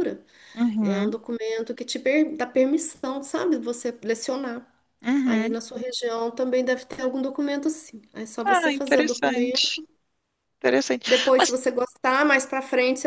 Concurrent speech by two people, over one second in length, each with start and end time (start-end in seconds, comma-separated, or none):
8.4-9.8